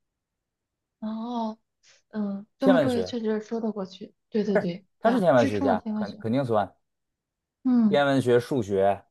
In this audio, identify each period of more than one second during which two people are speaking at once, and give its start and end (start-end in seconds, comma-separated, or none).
5.0-6.2